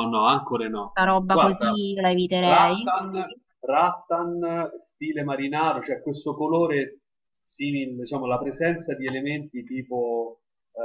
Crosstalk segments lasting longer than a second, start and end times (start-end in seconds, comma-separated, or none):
none